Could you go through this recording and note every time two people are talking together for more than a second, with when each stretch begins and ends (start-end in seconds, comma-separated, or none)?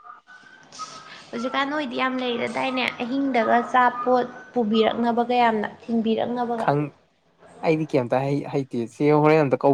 none